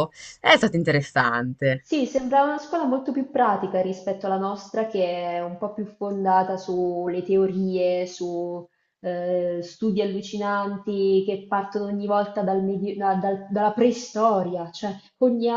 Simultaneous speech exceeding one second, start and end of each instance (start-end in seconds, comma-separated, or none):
none